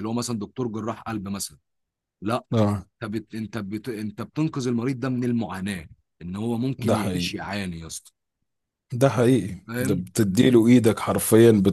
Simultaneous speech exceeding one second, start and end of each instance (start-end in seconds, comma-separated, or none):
none